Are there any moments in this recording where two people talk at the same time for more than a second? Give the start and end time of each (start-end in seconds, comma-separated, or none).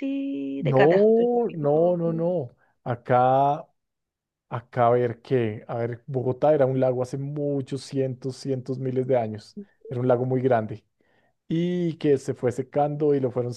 0.6-2.0